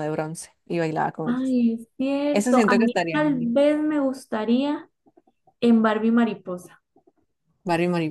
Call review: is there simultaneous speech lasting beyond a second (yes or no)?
yes